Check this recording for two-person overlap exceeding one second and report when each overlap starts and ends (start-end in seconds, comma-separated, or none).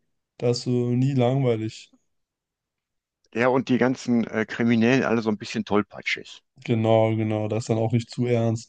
none